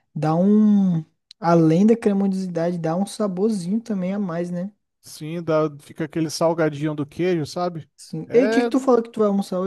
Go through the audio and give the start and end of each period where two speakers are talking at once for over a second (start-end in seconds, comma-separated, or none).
none